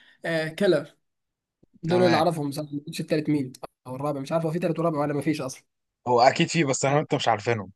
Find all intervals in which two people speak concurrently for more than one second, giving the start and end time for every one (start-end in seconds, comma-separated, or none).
none